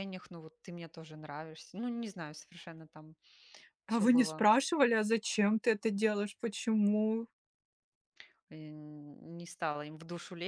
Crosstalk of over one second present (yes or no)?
no